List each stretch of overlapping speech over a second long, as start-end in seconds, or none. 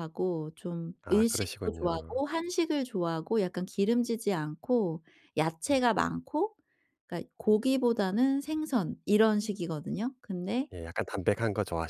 1.0-2.2